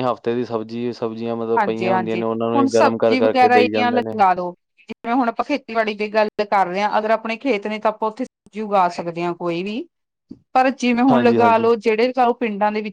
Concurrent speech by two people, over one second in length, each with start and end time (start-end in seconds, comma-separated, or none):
1.6-4.2